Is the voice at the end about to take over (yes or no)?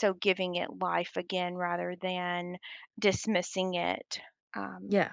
no